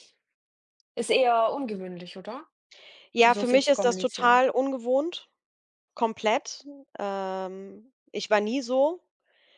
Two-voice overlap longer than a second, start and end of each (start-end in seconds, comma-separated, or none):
3.2-4.4